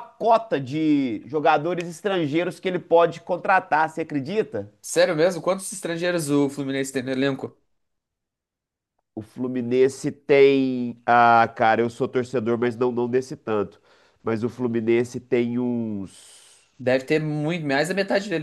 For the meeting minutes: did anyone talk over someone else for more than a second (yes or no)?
no